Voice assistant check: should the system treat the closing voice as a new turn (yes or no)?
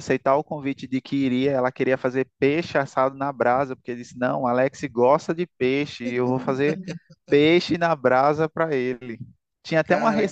no